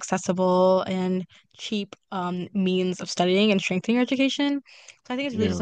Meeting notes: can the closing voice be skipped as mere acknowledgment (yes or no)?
yes